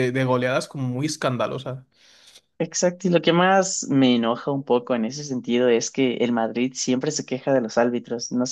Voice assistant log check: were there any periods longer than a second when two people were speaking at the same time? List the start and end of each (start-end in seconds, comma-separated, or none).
none